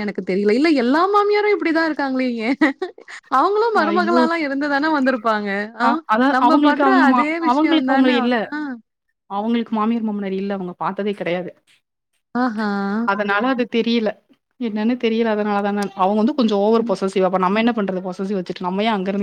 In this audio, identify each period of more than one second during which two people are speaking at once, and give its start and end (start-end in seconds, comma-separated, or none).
5.9-8.3